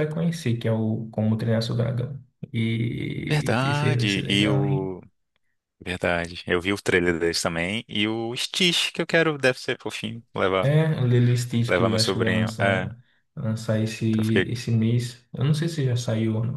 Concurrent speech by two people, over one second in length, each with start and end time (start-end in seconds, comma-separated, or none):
3.3-4.9, 11.7-12.9